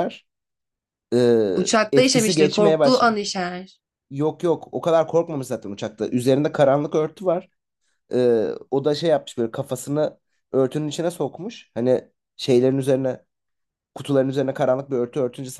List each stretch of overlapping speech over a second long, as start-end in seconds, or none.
1.9-3.1